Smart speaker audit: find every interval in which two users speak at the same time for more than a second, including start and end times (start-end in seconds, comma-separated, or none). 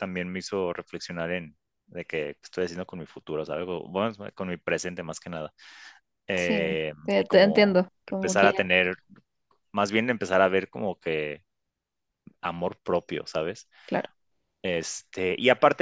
6.4-8.6